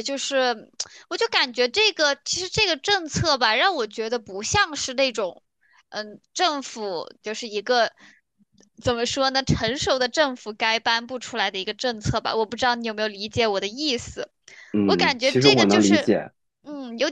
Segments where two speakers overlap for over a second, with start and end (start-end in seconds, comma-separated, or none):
14.9-16.1